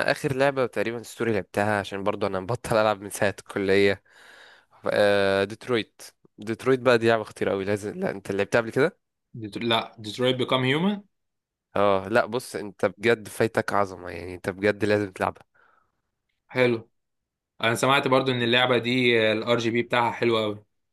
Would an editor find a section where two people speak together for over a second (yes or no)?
no